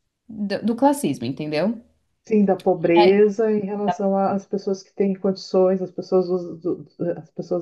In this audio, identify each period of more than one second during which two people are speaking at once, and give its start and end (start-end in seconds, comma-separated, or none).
none